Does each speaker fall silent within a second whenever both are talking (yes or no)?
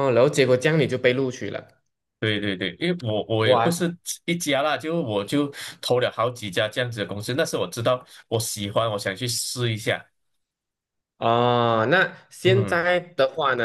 yes